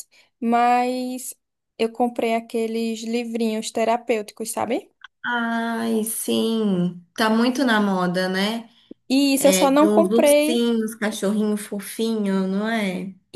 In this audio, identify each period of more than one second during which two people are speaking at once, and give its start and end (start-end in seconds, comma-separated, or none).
9.4-10.7